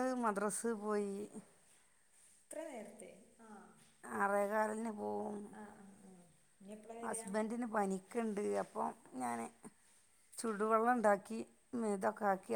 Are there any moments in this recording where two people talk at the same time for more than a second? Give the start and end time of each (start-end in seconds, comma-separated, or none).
none